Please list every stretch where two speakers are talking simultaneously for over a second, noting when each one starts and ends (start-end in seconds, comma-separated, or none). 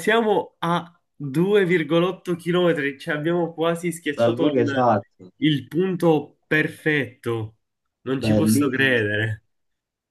8.2-9.4